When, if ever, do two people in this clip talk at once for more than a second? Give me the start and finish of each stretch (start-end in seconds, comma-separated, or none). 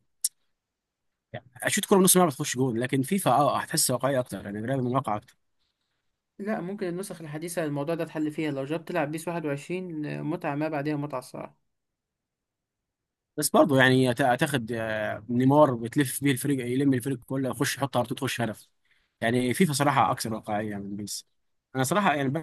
none